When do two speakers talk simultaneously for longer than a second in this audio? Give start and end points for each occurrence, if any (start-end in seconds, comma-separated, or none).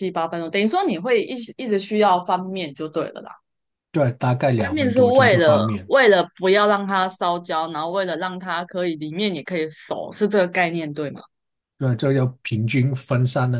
4.5-5.9